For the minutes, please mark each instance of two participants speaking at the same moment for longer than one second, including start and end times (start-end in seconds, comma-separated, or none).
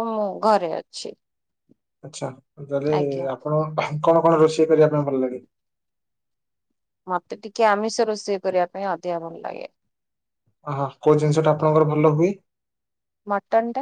none